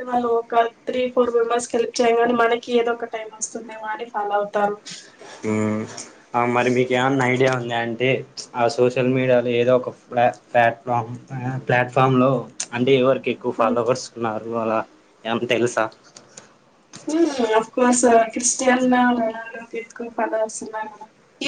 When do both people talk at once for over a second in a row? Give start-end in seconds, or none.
none